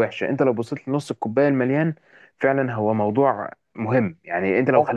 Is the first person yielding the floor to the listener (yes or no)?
no